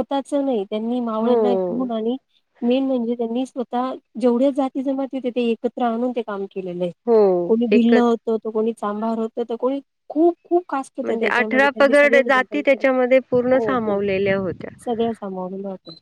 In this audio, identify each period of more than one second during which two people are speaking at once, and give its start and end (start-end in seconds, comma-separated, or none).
none